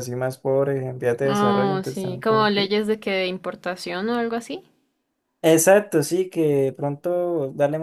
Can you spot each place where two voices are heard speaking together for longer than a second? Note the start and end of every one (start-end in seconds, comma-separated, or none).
1.2-2.7